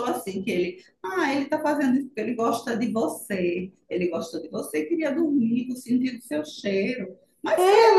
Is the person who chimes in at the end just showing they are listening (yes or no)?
yes